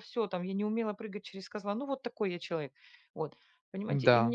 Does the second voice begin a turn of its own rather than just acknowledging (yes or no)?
no